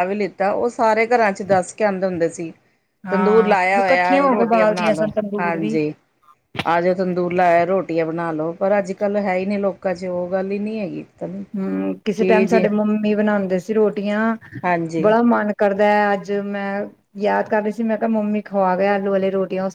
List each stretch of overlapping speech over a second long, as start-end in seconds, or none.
3.1-5.7